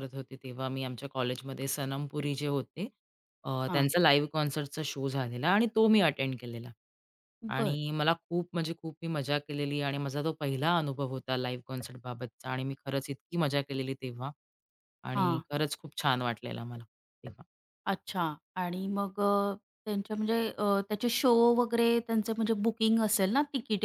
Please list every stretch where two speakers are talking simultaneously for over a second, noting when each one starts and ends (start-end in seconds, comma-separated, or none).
none